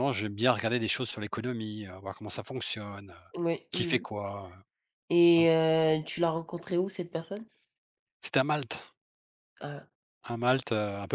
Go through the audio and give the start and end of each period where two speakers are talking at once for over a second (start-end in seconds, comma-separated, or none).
none